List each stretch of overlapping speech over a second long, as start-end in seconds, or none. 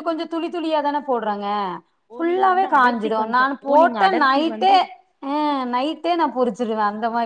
2.2-4.7